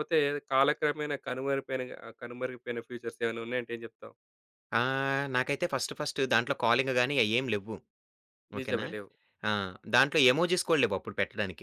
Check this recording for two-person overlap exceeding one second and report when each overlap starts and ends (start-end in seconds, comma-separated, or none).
none